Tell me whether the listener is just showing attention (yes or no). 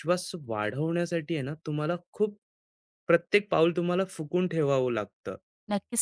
no